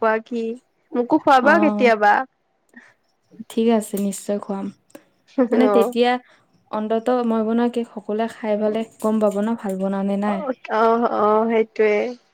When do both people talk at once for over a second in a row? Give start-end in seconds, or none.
none